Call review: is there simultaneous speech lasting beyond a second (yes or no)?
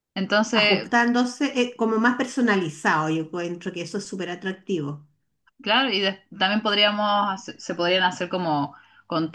no